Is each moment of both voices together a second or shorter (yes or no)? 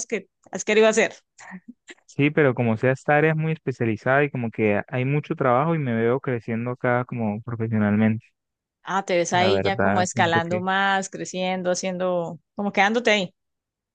no